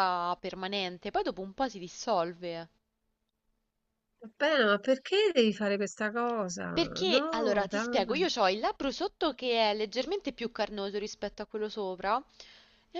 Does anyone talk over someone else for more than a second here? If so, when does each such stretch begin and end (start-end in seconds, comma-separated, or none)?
7.0-8.2